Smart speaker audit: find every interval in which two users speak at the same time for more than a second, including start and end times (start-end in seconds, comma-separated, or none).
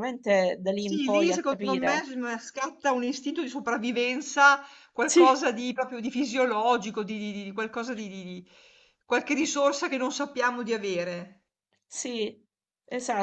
0.8-2.0